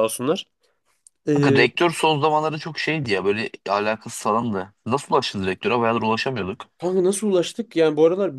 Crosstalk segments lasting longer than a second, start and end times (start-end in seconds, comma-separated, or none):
none